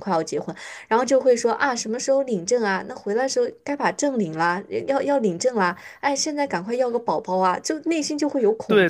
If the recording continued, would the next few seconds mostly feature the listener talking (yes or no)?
yes